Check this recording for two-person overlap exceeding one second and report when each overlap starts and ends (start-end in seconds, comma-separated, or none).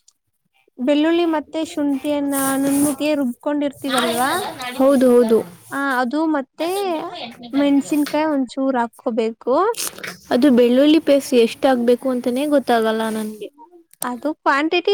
none